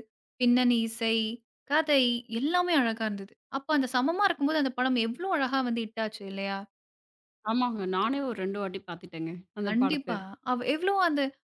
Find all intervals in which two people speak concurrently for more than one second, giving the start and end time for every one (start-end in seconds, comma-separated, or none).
none